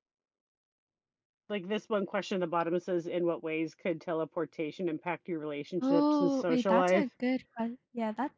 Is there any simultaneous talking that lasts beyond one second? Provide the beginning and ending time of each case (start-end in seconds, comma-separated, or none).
5.8-7.2